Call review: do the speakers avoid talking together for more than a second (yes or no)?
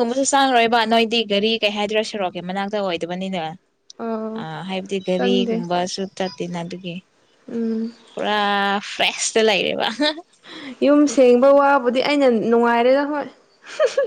yes